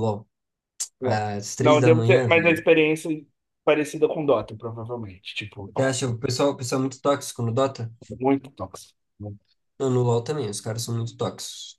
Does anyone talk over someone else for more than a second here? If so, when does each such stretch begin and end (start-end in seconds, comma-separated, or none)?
1.0-2.6